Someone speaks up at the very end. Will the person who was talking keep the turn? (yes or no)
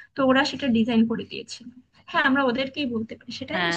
no